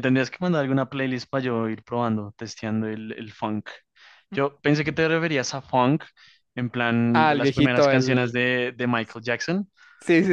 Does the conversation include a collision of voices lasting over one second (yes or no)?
yes